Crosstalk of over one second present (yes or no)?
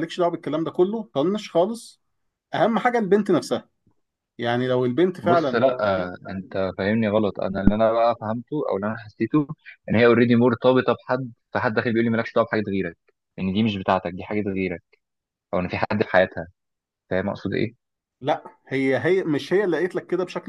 no